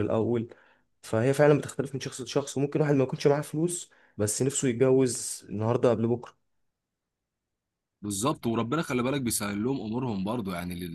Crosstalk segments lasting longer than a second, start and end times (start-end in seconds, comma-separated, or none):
none